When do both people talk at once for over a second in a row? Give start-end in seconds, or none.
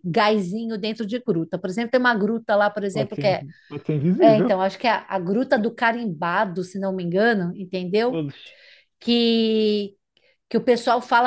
none